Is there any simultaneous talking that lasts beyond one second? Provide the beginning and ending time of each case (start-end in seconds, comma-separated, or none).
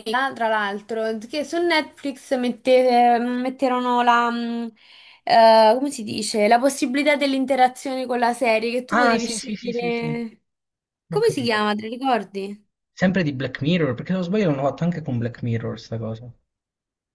8.9-10.2